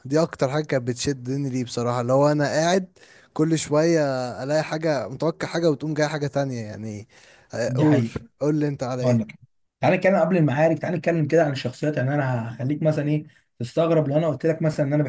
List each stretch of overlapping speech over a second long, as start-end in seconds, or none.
none